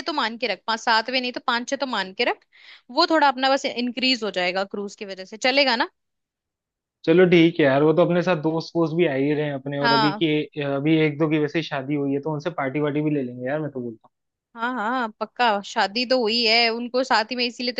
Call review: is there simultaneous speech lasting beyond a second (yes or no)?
no